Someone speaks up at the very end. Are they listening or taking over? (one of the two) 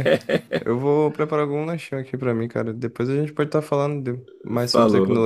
taking over